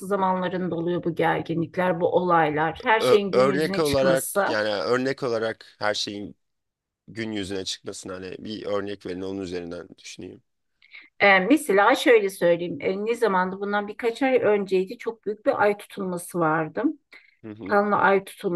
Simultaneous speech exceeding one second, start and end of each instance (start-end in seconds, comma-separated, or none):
3.0-4.5